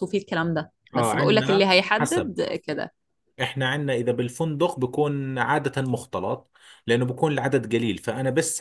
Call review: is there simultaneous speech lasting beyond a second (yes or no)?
yes